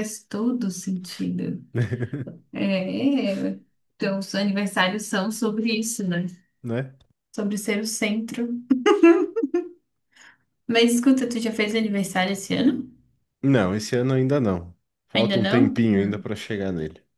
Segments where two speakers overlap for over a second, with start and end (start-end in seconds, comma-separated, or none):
15.1-16.3